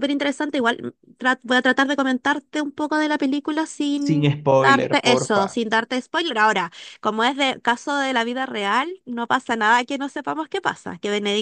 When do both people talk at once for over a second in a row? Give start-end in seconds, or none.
3.9-5.6